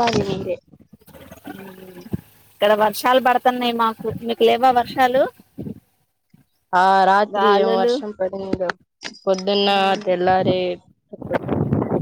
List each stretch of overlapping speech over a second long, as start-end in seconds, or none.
none